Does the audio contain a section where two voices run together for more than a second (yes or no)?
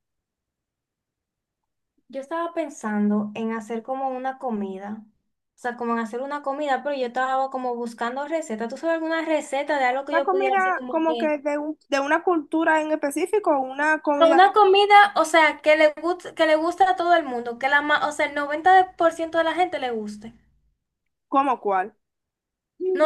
yes